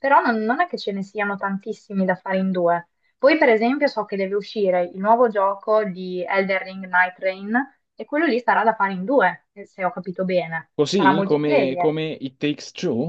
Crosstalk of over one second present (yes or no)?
yes